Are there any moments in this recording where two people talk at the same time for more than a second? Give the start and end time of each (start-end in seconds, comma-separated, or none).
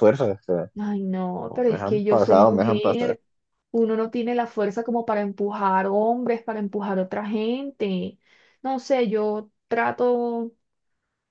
1.5-3.2